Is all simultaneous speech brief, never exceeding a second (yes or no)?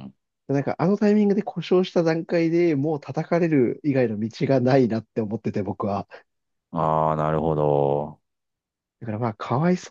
yes